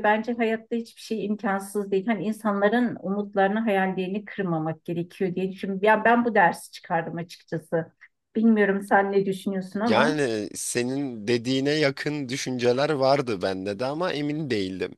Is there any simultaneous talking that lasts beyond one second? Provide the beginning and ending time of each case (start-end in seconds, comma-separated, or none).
none